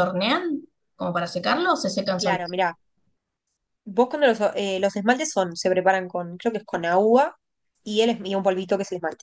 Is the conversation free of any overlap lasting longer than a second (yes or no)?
yes